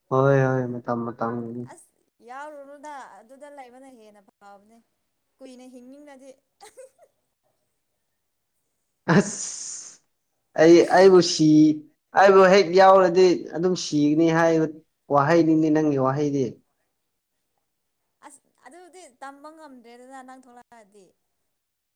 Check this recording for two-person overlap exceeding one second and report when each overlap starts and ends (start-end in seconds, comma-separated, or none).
none